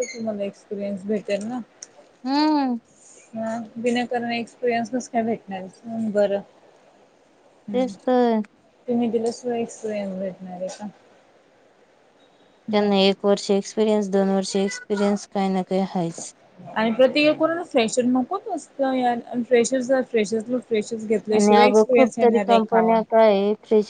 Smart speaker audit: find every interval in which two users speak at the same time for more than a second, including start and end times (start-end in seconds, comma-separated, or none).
21.4-22.8